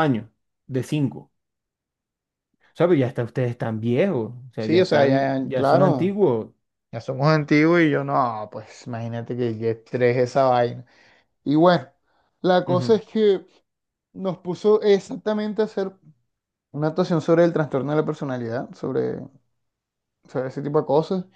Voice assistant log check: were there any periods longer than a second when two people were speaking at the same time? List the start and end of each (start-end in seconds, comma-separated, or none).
4.6-6.2